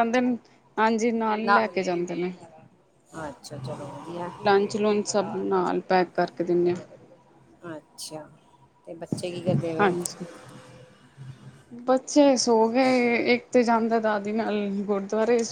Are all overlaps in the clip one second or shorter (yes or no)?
yes